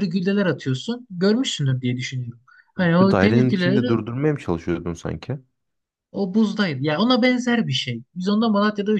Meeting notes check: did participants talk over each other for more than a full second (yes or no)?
yes